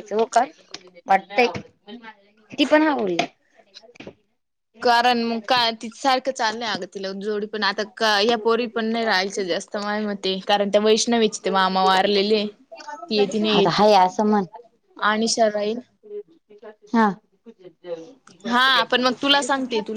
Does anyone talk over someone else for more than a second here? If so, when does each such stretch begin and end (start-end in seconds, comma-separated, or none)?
none